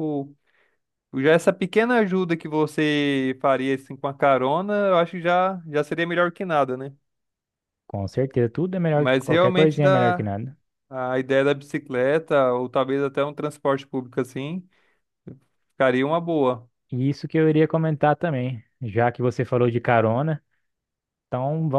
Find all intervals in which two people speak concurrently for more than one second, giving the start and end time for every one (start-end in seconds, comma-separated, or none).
9.0-10.3